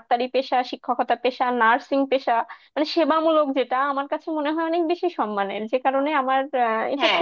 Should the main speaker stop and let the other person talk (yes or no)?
yes